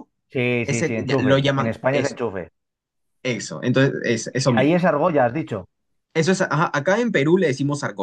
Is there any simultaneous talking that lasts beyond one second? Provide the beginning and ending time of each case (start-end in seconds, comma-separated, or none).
0.6-2.2